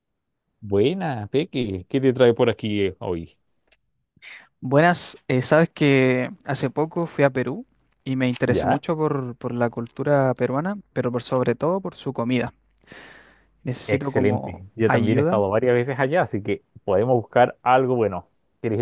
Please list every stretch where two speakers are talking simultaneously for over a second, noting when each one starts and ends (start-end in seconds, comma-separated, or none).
13.9-15.4